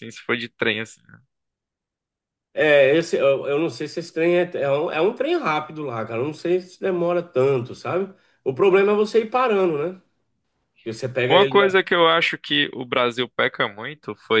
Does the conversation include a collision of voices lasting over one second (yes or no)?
no